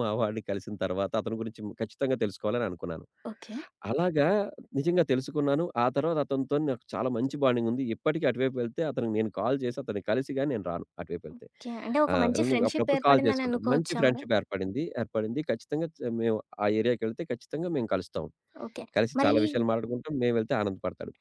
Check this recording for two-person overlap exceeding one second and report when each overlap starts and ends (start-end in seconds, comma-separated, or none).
12.1-14.2